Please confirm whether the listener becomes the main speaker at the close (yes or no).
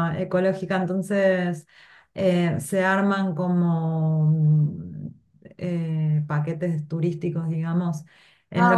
no